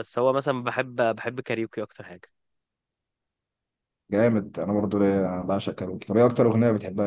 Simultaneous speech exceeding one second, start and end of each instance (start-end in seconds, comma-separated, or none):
none